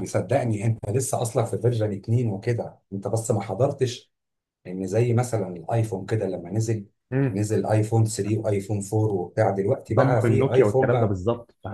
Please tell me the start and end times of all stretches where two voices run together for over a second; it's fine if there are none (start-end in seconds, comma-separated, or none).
9.9-11.2